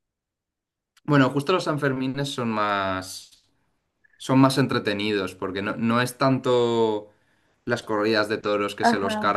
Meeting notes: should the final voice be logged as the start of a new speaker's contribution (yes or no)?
no